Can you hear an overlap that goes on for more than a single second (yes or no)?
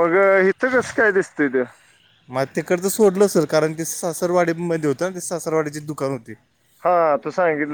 no